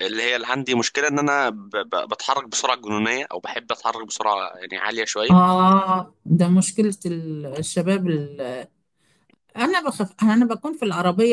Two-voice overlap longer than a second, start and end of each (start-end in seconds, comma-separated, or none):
none